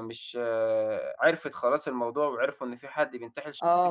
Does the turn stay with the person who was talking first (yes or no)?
no